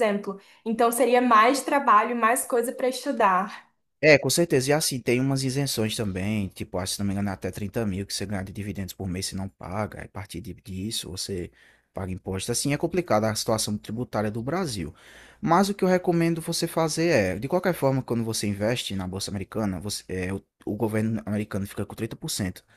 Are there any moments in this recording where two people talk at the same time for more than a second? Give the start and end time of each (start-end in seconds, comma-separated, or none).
none